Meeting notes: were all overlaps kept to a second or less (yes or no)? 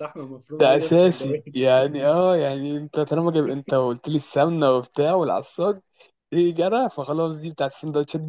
no